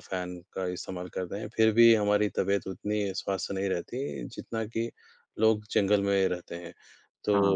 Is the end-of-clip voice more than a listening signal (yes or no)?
no